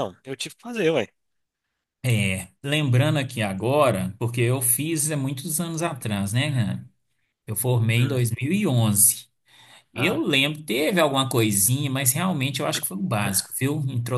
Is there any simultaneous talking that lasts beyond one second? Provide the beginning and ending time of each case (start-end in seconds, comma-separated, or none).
none